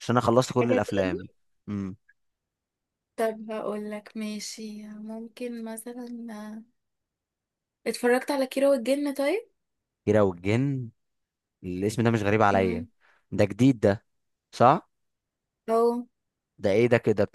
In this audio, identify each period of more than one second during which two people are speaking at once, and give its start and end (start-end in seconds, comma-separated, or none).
none